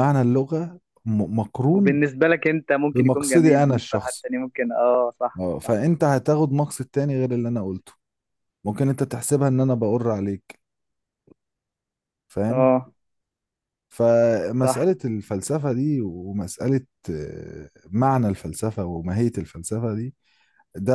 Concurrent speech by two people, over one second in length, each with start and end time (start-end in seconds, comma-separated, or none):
2.9-4.3